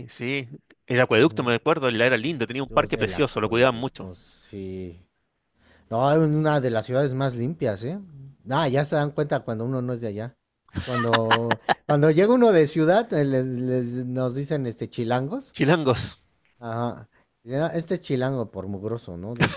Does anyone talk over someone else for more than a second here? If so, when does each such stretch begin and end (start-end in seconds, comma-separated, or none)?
2.7-4.1